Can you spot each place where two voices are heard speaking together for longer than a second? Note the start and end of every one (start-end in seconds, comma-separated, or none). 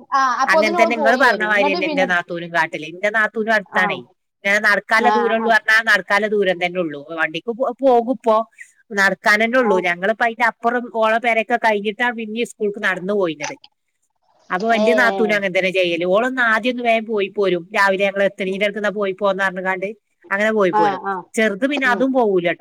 0.5-2.1